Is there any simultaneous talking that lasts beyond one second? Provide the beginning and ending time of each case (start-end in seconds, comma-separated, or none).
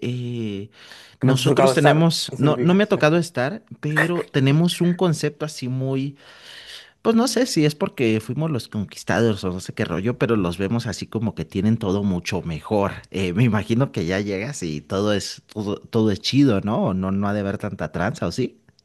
1.2-3.0